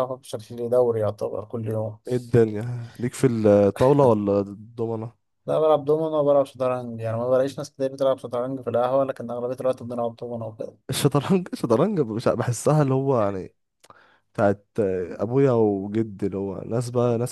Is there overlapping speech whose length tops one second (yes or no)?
no